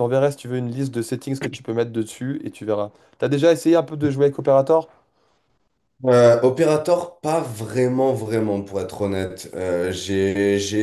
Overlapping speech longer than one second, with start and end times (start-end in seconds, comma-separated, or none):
none